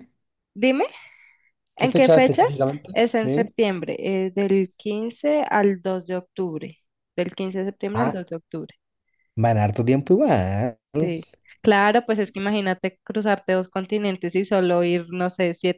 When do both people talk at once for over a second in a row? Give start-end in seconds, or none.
1.8-3.5